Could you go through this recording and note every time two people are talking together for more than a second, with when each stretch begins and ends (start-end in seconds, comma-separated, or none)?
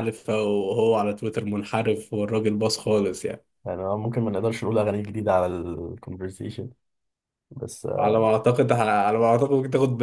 none